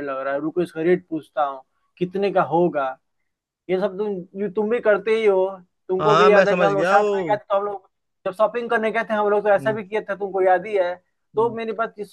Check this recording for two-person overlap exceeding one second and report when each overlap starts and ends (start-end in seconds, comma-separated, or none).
6.0-7.4